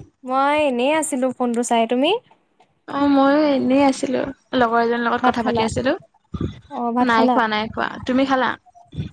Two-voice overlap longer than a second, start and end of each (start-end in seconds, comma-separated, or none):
none